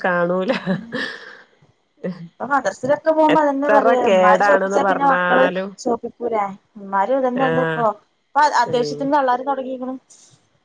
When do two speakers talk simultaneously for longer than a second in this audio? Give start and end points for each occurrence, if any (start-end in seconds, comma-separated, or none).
3.4-5.4